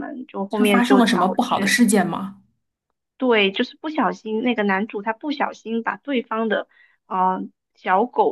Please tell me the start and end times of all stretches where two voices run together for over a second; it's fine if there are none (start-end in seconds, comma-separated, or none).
0.5-1.8